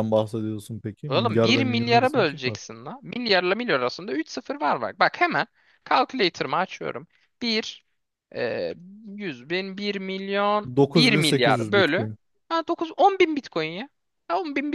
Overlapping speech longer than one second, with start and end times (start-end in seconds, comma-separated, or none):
1.1-2.6, 10.8-12.1